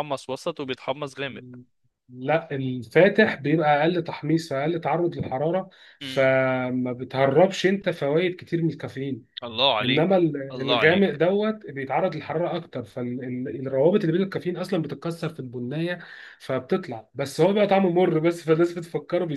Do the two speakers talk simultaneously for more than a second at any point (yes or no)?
yes